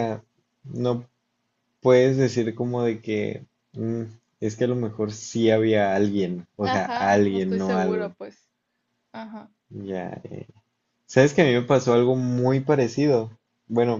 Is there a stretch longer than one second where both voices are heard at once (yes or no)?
yes